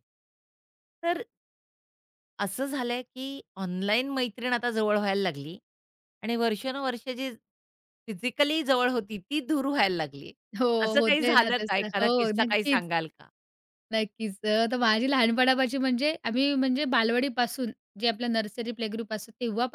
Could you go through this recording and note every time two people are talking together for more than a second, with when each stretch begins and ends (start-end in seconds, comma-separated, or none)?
10.8-12.8